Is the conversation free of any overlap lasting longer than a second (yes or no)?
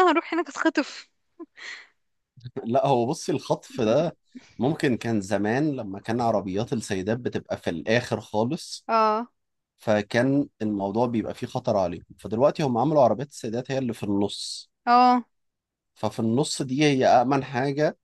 yes